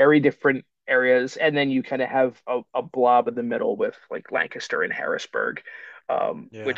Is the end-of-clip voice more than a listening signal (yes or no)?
no